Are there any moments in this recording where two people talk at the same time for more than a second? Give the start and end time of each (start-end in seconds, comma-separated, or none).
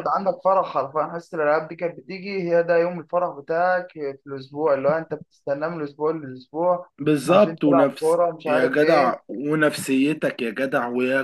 7.3-9.2